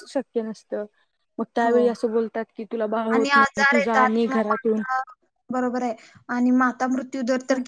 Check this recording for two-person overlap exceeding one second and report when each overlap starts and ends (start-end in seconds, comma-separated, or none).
3.1-4.8